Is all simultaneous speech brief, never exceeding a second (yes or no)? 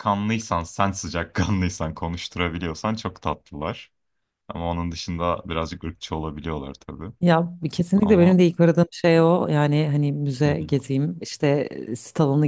yes